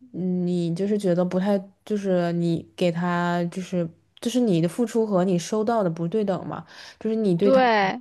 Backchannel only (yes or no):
yes